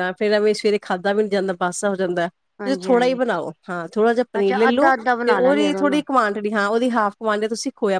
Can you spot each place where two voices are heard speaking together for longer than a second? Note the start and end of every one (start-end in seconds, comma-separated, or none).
4.4-6.0